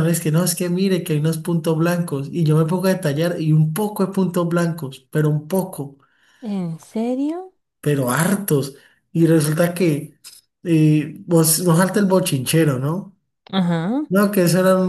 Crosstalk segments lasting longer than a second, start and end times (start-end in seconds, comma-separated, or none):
none